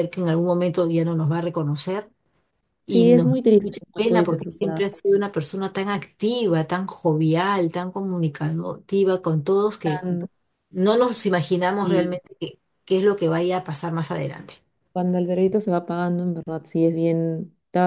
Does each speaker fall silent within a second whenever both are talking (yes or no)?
no